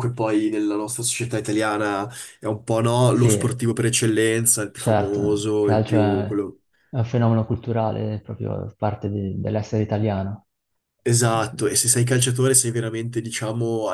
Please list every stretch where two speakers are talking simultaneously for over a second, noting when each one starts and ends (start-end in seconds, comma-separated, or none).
4.8-6.2